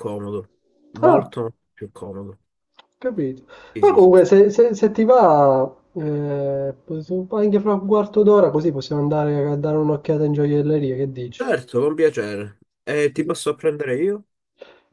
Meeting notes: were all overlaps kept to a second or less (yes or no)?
yes